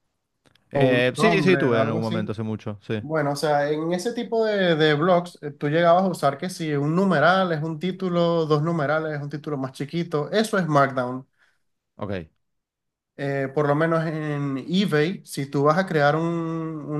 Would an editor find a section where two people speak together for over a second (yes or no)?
yes